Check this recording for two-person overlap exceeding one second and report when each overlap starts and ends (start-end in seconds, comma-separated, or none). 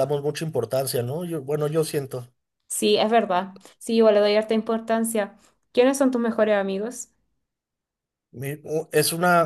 none